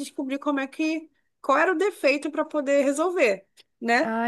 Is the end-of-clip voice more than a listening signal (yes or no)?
no